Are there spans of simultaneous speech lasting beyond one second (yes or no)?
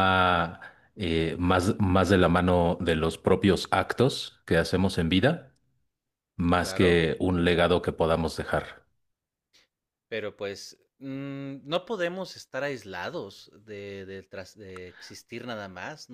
no